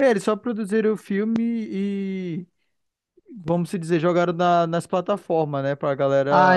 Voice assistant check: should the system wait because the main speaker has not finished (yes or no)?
no